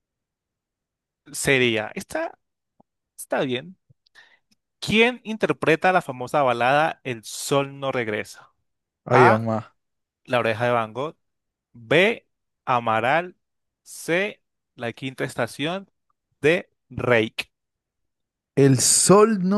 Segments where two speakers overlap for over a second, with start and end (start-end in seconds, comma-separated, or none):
none